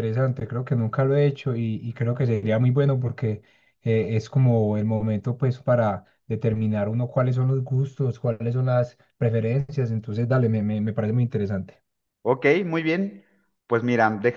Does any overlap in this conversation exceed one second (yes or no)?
no